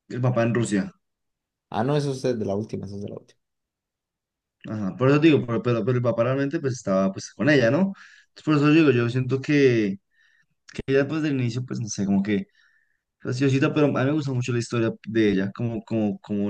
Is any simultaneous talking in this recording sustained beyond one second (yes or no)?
no